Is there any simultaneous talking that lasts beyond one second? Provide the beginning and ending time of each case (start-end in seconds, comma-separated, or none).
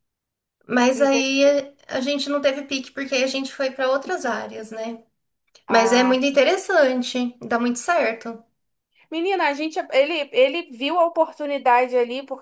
none